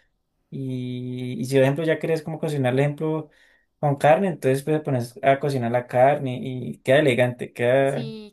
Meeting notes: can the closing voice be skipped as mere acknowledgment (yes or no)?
no